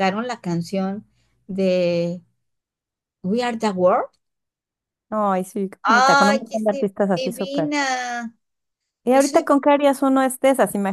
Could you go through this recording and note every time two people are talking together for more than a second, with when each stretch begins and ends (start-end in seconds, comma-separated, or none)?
5.8-7.7